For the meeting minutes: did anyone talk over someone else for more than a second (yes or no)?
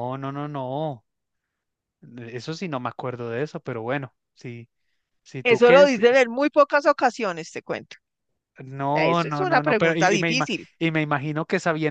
yes